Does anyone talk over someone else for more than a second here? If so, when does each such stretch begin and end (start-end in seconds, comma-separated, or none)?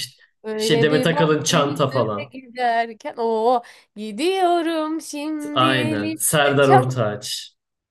0.6-2.3, 5.5-6.8